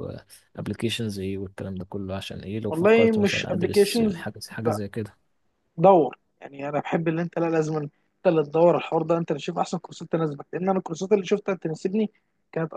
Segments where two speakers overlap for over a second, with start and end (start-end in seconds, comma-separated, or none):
2.7-4.2